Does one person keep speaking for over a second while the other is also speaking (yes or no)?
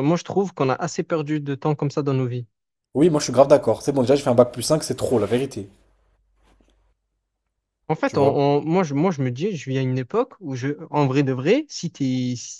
no